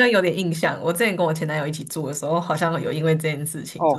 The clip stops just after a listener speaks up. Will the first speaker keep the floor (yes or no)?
no